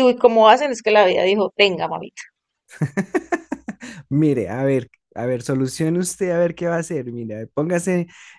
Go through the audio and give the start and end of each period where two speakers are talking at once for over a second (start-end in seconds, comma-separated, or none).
none